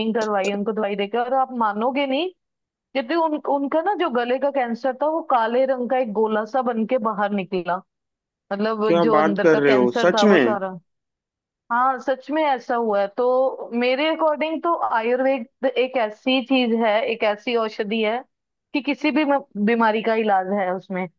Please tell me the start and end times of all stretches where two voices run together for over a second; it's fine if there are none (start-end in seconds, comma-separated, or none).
8.9-10.6